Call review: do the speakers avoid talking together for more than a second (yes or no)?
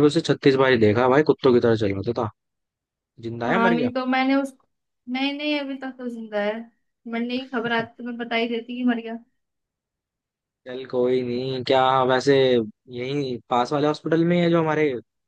yes